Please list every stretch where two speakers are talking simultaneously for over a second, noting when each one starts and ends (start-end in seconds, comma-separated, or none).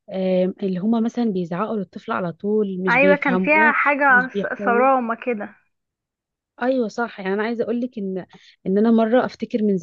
2.9-4.9